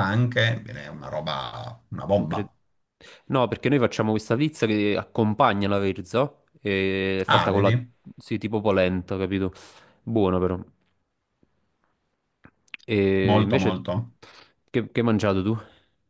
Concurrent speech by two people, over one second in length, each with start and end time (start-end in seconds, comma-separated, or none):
none